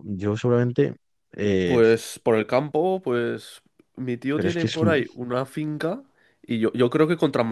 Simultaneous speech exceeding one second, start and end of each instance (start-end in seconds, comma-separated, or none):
none